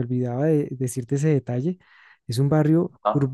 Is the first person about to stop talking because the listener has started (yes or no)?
no